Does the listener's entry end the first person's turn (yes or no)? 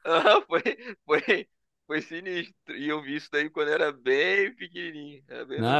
yes